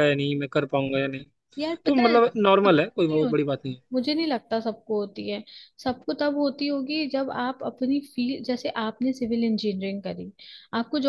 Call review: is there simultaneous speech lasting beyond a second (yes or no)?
yes